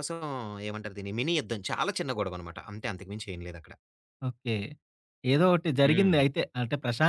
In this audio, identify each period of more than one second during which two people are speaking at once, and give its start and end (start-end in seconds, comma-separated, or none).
none